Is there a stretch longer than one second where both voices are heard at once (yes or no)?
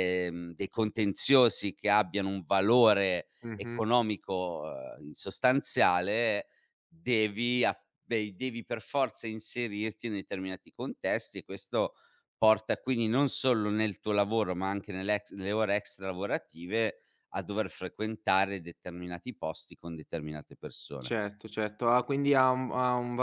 no